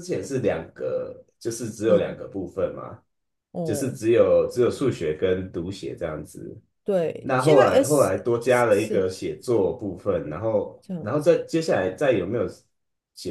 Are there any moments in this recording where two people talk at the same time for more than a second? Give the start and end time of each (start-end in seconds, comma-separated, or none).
7.2-9.1